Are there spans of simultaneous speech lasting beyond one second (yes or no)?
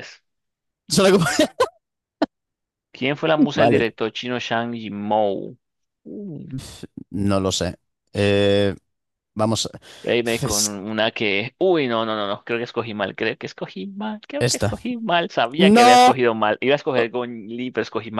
no